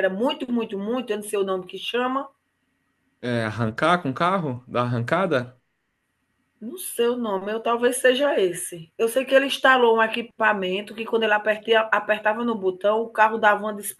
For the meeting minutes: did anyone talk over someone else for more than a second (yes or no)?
no